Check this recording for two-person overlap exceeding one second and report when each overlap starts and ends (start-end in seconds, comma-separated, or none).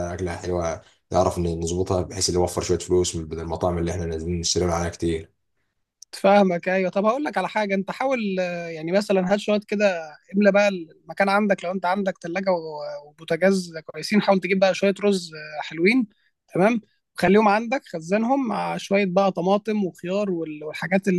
none